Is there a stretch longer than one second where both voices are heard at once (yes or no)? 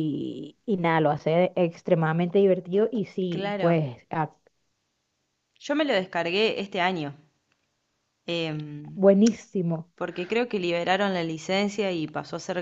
no